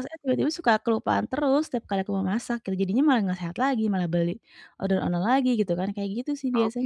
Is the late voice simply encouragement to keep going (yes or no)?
no